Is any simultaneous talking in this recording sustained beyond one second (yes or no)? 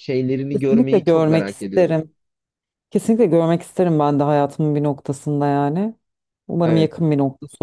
yes